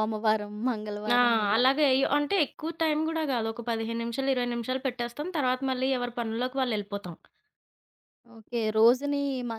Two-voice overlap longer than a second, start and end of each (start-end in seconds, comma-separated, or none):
none